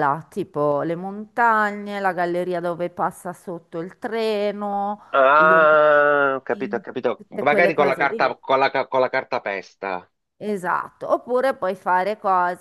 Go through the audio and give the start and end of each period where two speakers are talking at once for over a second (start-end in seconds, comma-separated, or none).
5.4-8.4